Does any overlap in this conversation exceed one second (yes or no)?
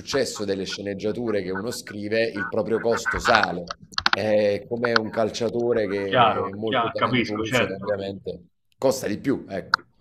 yes